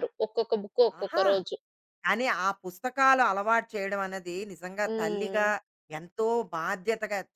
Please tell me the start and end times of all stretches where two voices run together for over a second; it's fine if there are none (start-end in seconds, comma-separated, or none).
none